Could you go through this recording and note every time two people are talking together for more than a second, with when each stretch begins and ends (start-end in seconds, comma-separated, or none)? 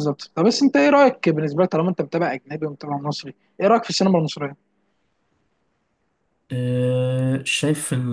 none